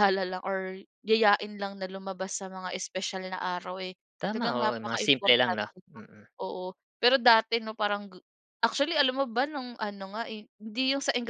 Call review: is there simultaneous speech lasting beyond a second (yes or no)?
yes